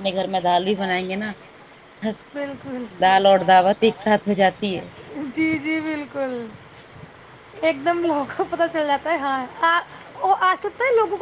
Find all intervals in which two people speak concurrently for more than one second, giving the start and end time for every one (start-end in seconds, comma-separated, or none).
none